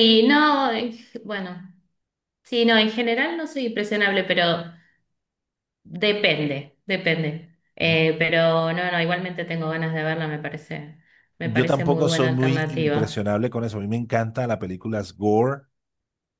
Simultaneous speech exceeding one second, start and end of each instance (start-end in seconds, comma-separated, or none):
11.4-13.2